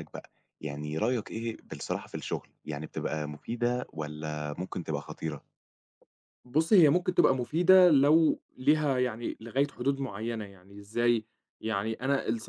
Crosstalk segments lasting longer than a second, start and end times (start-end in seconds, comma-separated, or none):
none